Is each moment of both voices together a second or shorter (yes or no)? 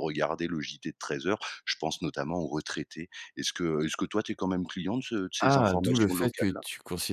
no